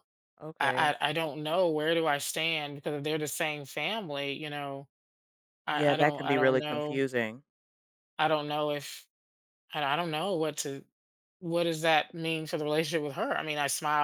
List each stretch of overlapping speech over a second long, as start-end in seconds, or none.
5.7-7.0